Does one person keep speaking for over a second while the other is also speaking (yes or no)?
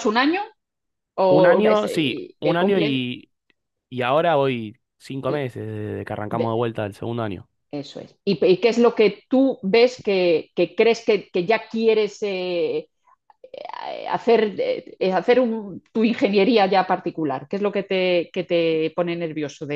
yes